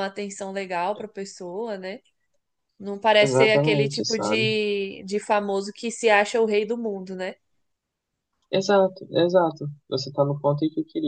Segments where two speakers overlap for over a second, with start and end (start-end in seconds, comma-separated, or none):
3.2-4.5